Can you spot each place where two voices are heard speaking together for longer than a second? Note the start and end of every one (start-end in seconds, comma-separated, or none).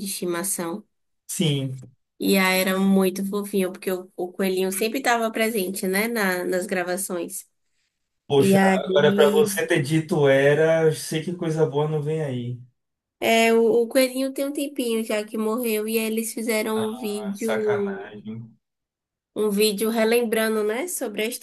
16.7-18.1